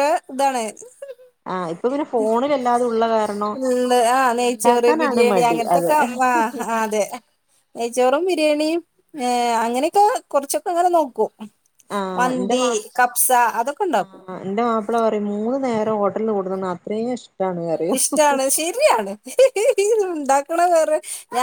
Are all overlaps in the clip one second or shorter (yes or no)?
no